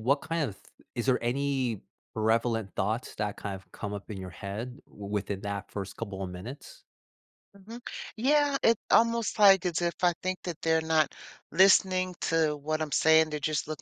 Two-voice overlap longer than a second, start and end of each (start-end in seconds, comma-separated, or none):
none